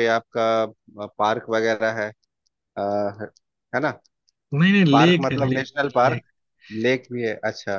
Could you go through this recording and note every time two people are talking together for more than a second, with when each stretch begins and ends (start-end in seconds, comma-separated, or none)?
4.9-6.2